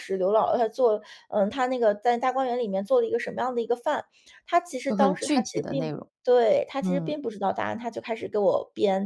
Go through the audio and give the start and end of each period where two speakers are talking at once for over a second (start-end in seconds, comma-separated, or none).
4.9-6.1